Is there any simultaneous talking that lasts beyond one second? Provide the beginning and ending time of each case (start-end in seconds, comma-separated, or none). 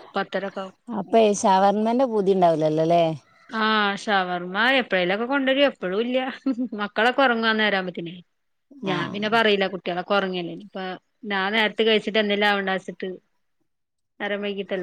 none